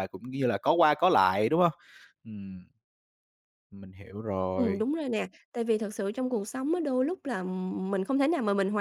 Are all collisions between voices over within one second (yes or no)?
yes